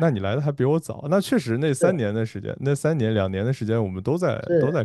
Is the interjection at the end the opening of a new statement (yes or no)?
yes